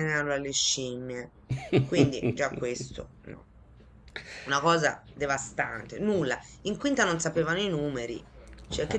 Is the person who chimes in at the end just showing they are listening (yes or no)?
yes